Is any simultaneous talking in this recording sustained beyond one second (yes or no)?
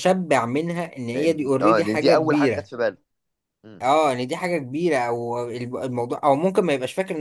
yes